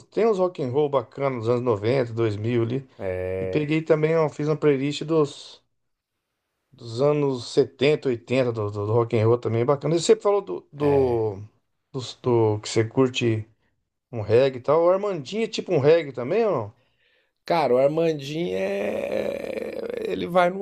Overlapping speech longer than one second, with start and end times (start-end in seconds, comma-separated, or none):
none